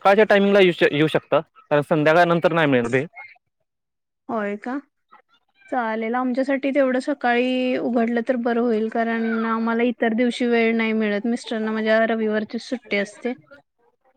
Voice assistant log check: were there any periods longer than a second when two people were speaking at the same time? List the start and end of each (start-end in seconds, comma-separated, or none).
none